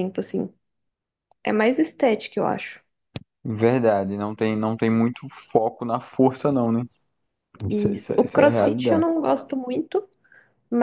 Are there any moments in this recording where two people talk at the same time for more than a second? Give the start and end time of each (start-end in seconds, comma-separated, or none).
7.7-9.1